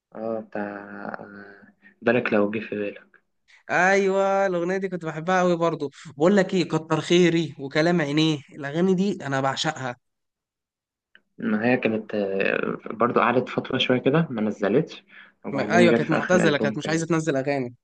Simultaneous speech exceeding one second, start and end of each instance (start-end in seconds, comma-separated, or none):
15.5-17.1